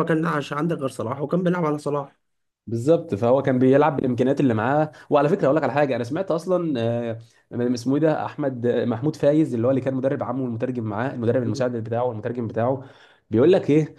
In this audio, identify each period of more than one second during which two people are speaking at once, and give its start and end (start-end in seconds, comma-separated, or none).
none